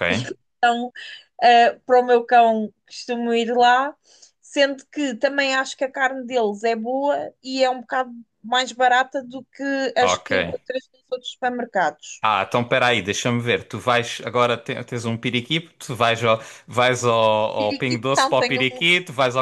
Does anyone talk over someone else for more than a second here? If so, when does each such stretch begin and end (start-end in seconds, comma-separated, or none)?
17.6-18.9